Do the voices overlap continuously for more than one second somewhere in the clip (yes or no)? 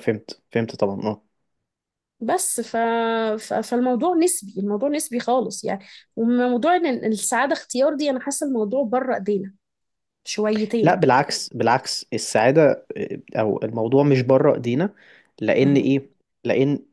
no